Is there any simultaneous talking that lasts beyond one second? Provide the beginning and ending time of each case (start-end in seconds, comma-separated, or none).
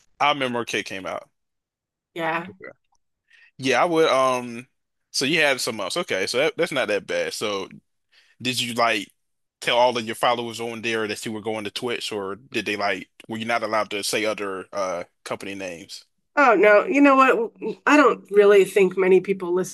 none